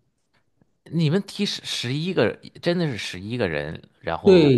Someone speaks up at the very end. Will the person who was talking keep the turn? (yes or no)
no